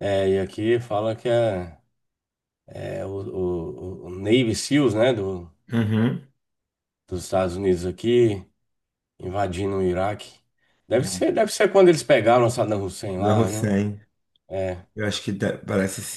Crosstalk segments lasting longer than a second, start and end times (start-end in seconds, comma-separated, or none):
none